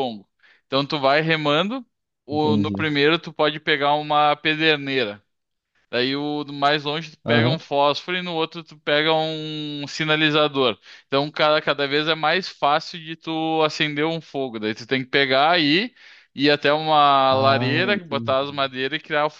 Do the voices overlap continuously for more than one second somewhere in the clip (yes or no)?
yes